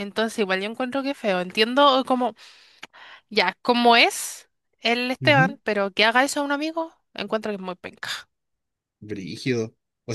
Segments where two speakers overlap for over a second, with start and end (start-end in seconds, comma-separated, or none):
none